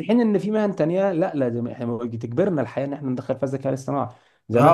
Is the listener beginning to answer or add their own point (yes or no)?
yes